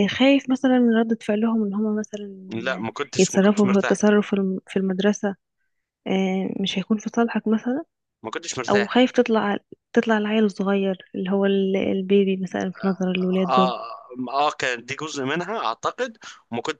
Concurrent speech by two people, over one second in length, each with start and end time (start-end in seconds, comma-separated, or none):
2.5-4.0